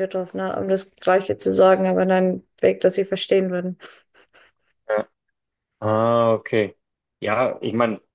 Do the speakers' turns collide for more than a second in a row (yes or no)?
no